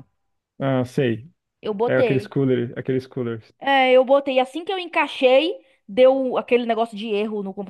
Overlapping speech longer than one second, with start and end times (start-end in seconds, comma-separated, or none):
none